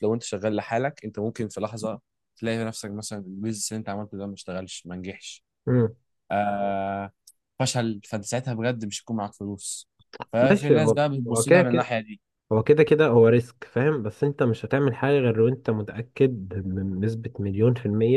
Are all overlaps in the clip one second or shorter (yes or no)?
no